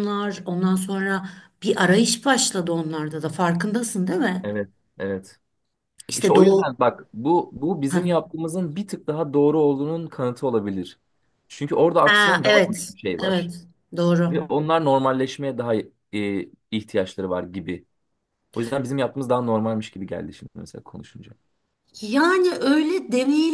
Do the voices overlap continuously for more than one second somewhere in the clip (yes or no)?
yes